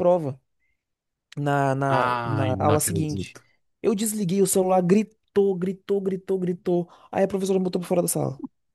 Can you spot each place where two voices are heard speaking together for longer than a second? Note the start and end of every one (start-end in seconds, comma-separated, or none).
1.9-3.4